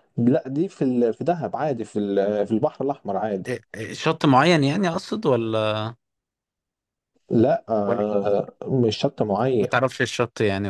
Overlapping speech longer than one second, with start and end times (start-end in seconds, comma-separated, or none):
none